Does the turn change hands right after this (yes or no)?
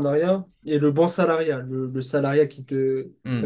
yes